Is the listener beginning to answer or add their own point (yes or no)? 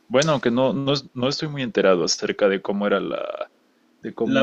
yes